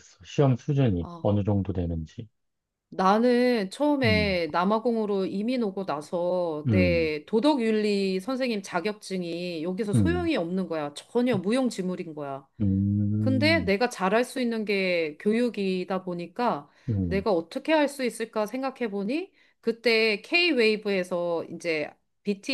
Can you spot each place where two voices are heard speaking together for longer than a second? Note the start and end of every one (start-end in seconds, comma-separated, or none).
none